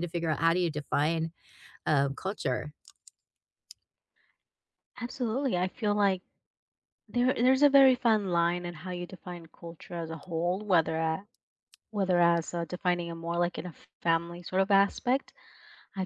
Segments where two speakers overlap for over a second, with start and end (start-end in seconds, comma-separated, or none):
none